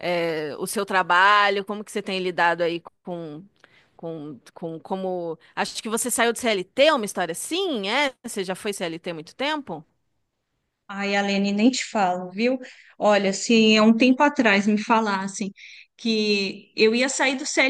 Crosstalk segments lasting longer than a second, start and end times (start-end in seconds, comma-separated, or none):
none